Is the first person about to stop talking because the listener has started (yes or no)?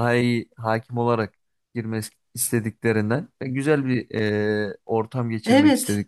no